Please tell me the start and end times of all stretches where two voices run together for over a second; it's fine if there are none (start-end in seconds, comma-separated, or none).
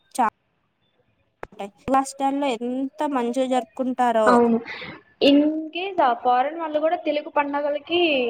none